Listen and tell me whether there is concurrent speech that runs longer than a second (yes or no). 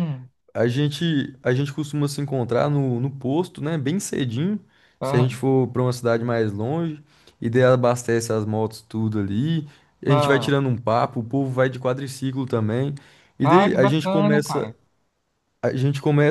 yes